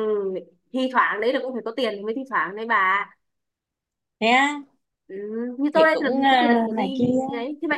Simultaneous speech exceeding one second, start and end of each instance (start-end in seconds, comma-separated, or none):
5.7-7.1